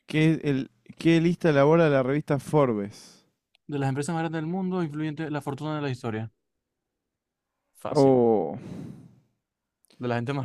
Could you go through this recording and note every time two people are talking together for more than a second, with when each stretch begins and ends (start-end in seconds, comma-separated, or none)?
none